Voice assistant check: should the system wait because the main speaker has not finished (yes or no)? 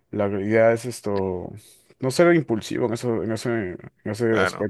yes